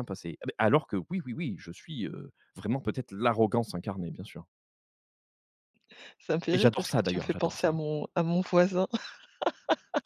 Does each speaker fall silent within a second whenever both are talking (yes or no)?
no